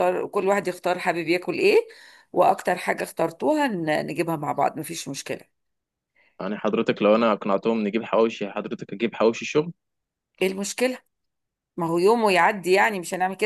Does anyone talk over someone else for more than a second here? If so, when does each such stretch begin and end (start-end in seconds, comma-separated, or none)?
none